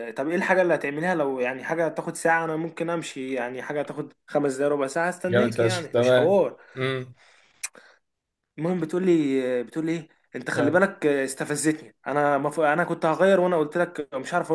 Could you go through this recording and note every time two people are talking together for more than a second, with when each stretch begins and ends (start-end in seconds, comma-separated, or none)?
5.3-6.5